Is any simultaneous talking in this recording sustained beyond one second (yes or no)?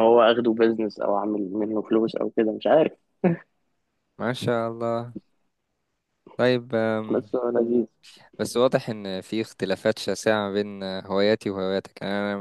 no